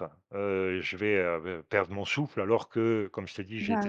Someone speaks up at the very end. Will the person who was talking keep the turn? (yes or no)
yes